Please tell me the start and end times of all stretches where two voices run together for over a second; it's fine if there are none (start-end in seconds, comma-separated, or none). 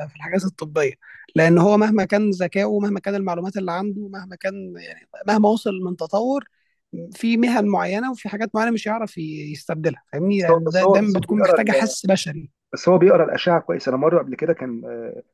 10.3-11.9